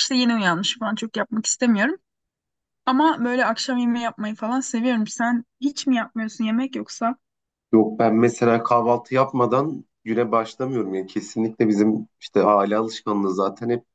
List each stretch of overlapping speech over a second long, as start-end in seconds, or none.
none